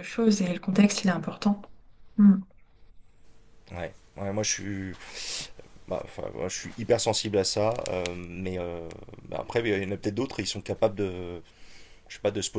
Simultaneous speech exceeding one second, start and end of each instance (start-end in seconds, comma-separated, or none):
none